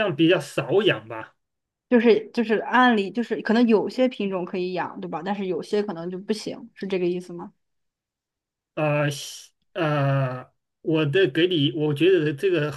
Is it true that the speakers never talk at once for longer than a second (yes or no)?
yes